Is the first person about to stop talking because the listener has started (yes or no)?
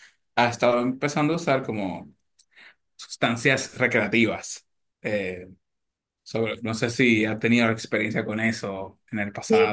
yes